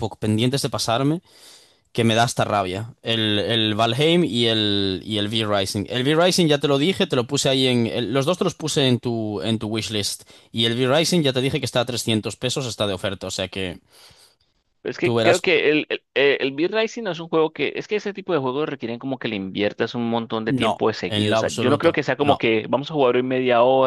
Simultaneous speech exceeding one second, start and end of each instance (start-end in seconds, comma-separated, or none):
20.5-22.4